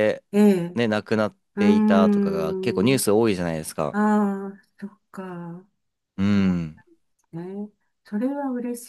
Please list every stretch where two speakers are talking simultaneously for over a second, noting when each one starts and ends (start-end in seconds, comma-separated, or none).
1.6-3.0